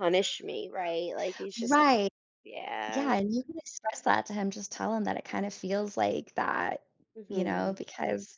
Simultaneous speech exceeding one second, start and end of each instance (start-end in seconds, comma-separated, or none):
none